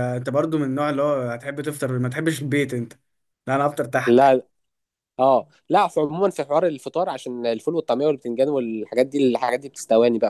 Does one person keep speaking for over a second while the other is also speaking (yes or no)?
no